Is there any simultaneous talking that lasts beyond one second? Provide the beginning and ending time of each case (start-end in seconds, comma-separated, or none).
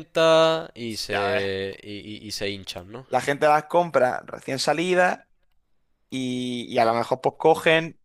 none